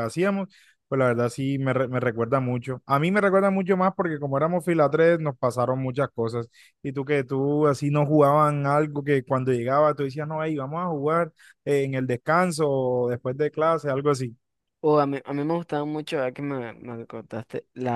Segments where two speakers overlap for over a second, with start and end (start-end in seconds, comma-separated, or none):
none